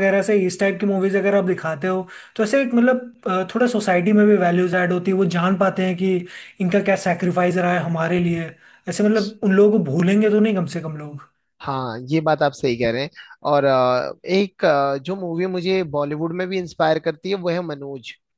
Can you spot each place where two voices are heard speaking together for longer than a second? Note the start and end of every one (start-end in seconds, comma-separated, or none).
none